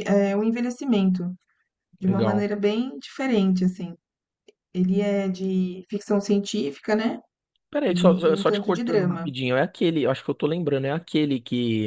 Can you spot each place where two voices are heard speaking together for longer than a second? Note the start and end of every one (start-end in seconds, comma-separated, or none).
7.9-9.3